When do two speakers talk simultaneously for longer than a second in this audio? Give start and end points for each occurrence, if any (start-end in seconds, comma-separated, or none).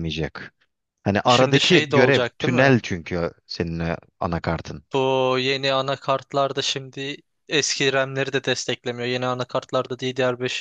1.3-2.8